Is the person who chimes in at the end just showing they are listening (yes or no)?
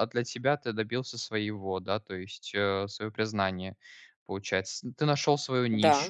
no